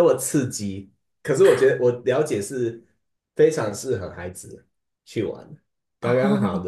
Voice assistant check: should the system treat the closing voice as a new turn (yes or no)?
no